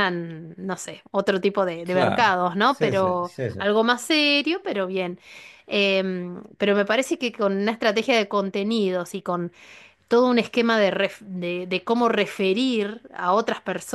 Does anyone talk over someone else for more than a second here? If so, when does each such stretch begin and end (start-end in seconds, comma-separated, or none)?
1.8-3.6